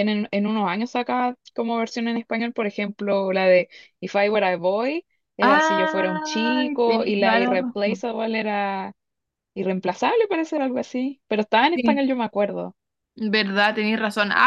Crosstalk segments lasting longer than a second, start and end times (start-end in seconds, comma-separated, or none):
5.4-8.0